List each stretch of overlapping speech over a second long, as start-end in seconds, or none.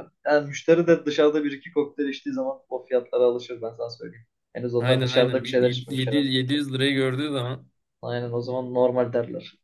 4.8-6.3